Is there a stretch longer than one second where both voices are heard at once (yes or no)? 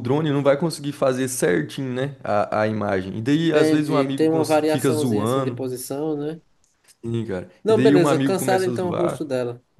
yes